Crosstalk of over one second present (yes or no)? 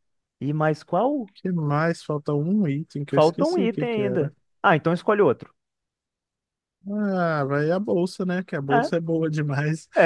yes